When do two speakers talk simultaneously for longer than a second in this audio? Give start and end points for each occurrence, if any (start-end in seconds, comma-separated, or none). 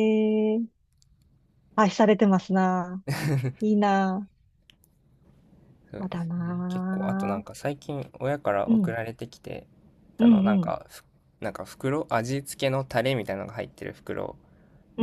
6.0-7.4